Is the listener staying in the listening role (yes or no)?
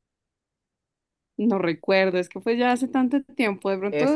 no